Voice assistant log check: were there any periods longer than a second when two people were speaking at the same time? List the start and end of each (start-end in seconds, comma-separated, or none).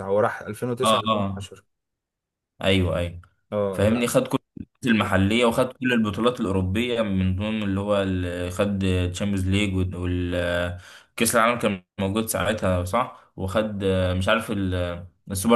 none